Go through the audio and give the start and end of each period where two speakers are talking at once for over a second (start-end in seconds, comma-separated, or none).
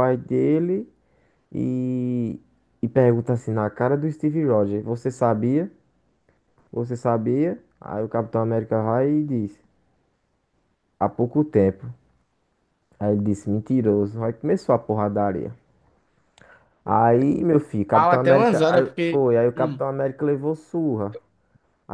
17.9-19.8